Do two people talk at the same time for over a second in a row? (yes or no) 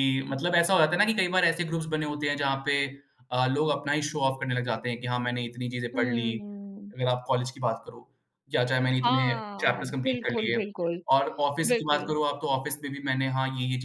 yes